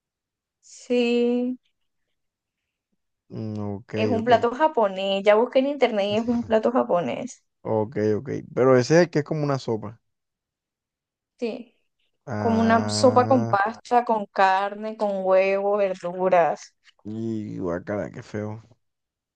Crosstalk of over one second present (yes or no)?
yes